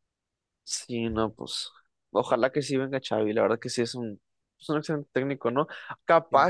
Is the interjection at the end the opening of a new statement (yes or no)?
no